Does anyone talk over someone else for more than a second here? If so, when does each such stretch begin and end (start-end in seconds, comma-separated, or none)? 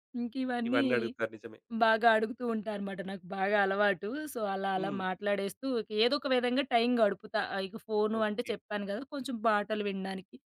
none